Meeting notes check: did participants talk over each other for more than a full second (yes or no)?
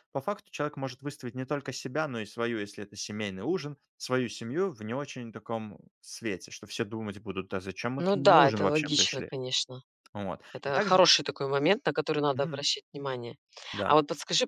yes